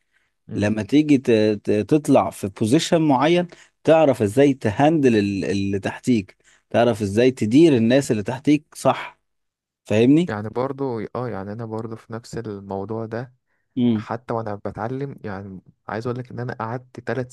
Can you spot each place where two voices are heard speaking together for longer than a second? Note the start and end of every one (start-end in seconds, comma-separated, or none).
none